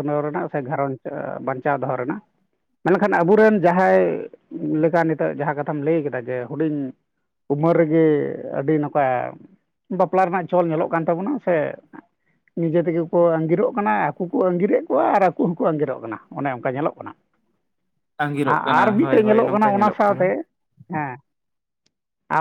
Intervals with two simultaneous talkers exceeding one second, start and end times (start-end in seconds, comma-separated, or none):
18.5-20.2